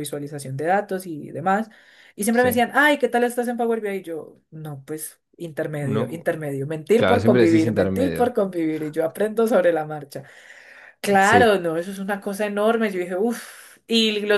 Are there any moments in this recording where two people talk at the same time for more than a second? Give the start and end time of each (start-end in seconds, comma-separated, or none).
7.0-8.3